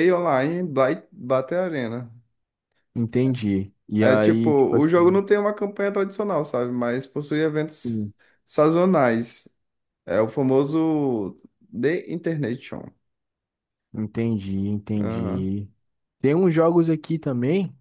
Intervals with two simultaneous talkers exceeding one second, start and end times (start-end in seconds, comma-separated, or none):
4.0-5.2